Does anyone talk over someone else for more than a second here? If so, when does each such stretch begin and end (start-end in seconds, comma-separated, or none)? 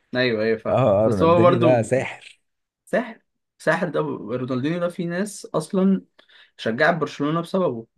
0.7-1.9